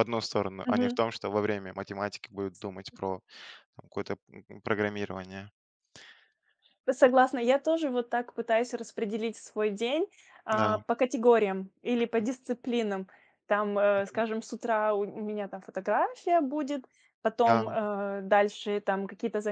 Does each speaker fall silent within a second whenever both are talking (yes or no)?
yes